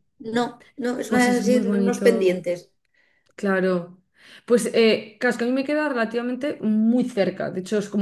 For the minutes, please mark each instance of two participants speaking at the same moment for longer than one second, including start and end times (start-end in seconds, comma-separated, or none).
1.1-2.4